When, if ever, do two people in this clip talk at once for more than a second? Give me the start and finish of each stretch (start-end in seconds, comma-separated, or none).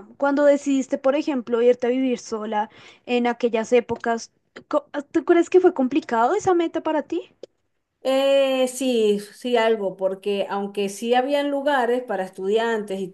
none